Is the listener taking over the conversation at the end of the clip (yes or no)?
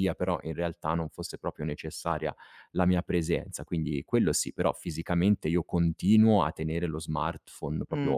no